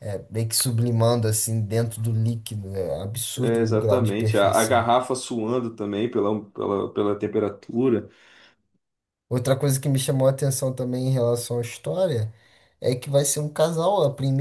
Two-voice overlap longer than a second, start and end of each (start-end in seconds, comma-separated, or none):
3.4-4.8